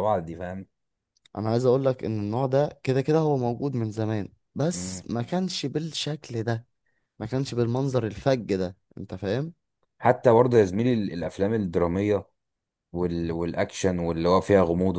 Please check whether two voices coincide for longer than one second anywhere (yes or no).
no